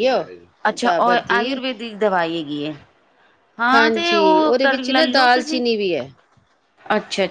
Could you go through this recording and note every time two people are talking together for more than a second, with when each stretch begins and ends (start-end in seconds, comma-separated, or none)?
3.7-5.7